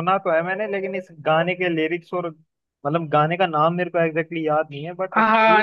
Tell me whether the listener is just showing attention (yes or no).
no